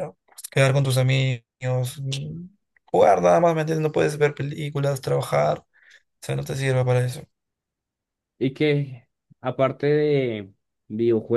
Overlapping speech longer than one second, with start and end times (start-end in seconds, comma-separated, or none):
none